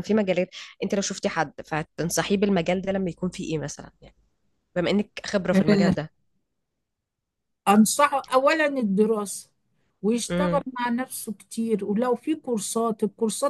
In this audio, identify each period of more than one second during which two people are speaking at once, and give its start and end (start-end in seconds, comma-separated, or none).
none